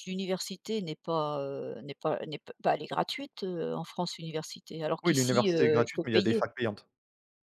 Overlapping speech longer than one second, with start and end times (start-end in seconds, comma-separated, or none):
5.0-6.4